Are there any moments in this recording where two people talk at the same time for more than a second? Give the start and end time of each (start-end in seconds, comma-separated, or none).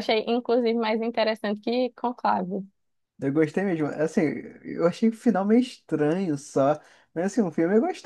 none